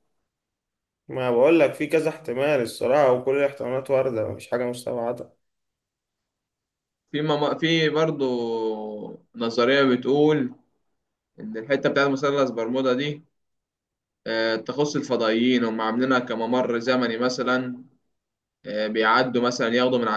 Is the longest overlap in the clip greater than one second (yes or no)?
no